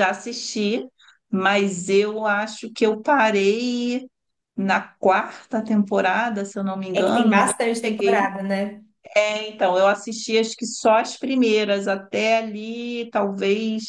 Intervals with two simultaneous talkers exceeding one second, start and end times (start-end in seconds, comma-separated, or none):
7.0-8.3